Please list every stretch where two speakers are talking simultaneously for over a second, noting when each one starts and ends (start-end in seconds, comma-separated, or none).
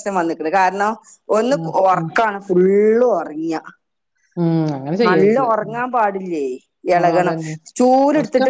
none